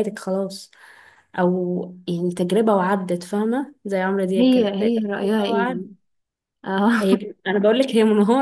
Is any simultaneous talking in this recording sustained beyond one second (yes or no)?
yes